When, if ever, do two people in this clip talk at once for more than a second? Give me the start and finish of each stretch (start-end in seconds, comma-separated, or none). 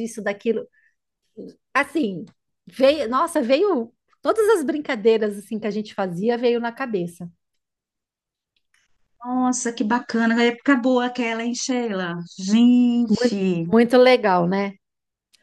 none